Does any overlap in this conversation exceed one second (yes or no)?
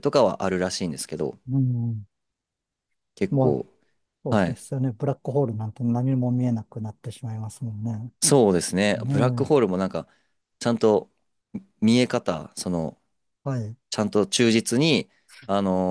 no